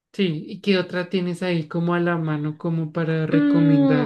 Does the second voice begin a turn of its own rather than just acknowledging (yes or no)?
yes